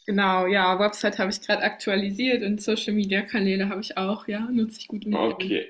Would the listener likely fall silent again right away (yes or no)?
no